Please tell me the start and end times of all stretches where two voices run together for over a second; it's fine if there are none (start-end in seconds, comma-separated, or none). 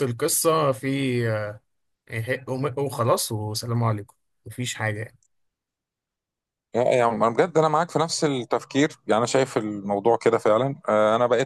none